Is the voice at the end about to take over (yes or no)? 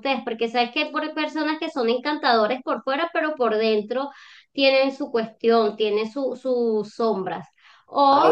no